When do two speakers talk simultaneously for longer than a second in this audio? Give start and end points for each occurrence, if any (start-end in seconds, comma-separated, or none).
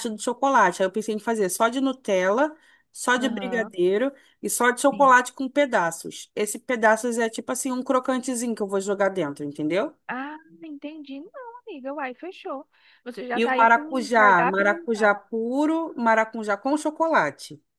13.4-15.1